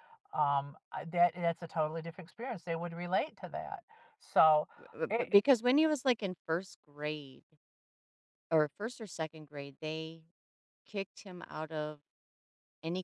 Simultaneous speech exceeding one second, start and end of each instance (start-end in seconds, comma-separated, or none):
none